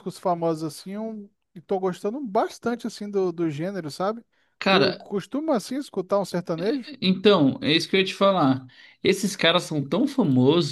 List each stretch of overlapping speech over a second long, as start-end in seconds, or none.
none